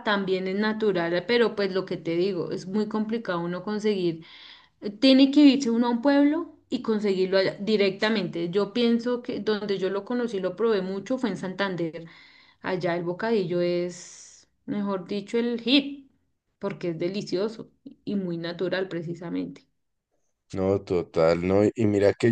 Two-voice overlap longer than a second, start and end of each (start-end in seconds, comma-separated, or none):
none